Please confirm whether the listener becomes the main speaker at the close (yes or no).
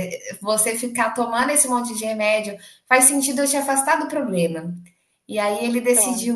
no